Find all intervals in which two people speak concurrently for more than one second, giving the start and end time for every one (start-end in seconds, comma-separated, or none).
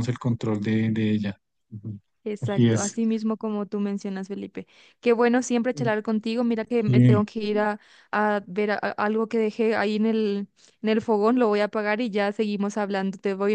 none